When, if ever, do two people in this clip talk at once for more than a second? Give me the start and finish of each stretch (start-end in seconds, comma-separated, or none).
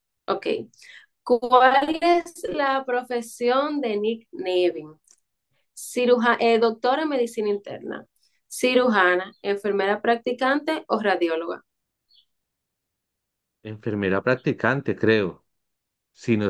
none